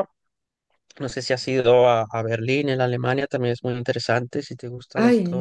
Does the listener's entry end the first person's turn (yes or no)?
yes